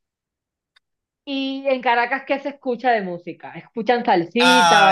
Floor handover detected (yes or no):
yes